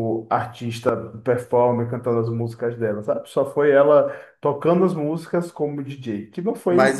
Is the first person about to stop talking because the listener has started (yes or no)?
yes